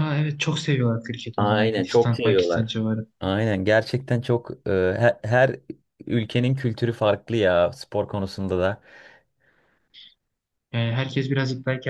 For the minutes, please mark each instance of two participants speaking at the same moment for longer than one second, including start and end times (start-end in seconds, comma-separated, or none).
1.4-2.8